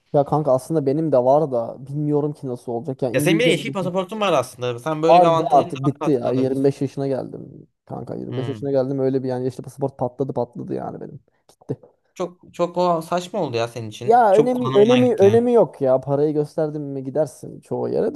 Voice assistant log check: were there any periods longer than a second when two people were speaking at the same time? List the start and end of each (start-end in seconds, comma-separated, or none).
5.1-6.7, 14.0-15.5